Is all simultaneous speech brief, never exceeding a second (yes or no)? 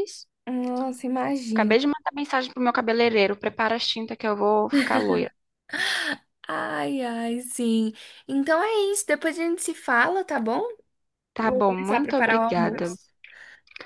no